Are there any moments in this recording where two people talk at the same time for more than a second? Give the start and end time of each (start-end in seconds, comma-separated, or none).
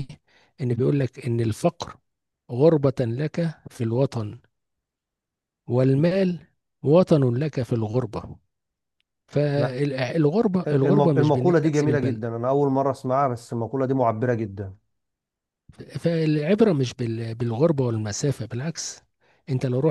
10.7-12.2